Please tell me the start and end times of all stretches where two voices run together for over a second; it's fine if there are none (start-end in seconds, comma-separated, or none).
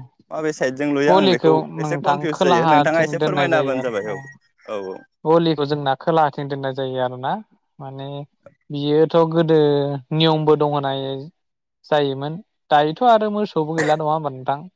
1.1-3.9